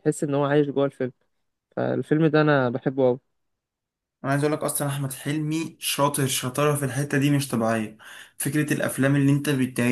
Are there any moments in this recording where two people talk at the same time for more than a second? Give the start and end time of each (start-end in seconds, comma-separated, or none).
none